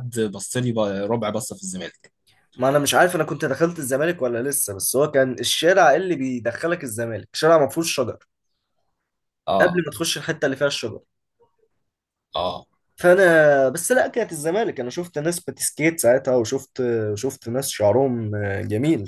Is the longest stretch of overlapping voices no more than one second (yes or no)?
yes